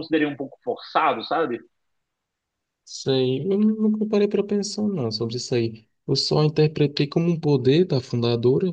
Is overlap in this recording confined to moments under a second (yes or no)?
yes